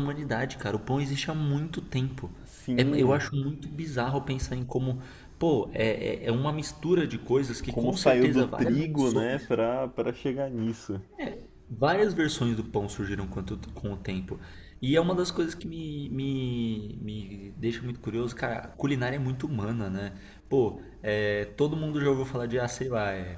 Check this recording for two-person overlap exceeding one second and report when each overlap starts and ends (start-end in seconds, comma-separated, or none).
7.7-9.5